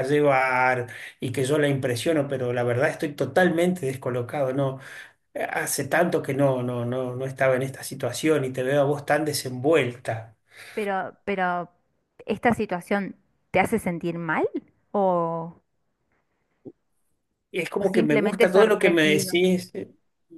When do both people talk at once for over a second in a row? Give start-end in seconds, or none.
17.8-19.3